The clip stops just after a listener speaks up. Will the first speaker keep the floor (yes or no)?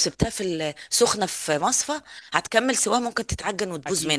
no